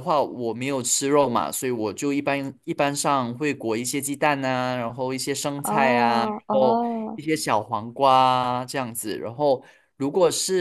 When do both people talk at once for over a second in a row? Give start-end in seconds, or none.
5.6-7.2